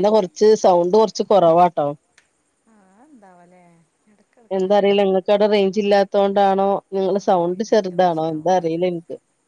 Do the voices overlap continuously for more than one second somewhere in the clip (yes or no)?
yes